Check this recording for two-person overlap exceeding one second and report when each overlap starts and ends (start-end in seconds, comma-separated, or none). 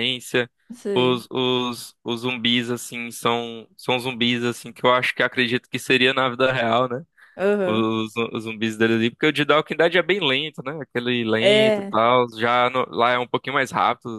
none